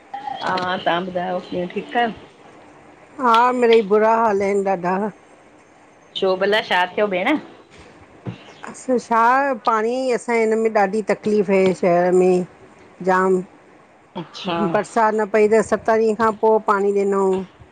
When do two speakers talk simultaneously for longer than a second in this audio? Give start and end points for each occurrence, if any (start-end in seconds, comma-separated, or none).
none